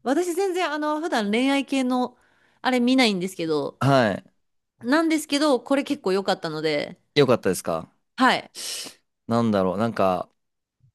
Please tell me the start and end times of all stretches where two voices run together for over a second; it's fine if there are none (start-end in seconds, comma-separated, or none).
none